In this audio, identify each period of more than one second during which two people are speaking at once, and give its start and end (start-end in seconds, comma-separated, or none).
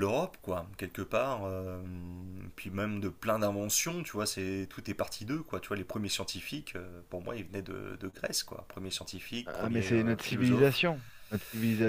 9.4-10.8